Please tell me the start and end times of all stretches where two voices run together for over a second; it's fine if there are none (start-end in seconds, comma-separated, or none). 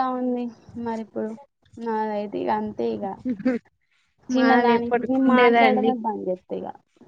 4.4-5.9